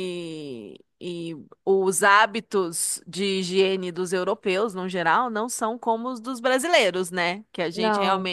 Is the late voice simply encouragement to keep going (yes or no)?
yes